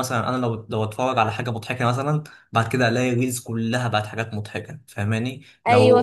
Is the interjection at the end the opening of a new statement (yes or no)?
no